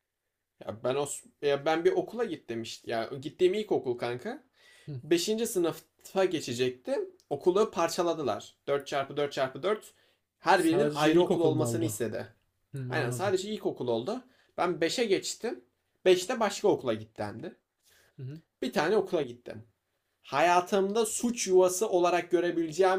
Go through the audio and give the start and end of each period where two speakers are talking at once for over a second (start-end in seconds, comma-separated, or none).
10.6-12.0